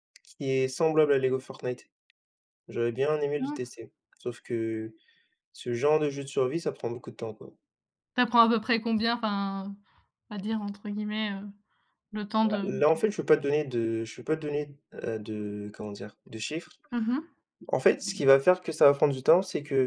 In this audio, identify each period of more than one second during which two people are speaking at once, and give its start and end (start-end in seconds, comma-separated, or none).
none